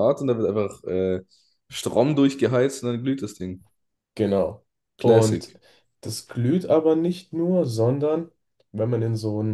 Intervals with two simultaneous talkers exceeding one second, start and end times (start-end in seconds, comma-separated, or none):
none